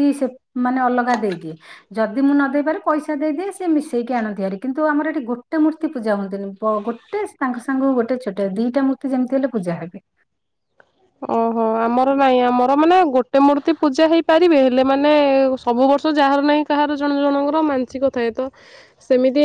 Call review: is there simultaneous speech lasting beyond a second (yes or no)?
no